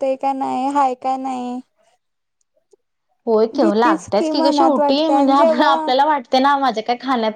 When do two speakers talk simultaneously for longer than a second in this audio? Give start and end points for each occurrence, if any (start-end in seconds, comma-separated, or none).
3.6-5.9